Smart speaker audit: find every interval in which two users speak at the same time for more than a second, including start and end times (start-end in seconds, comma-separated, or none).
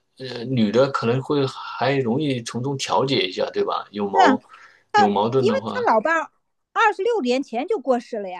none